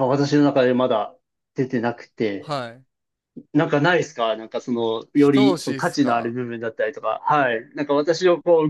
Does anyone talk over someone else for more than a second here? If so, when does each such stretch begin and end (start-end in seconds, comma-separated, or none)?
5.2-6.4